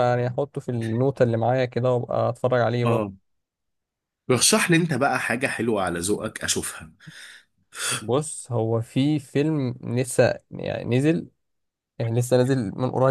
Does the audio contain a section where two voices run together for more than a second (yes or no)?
no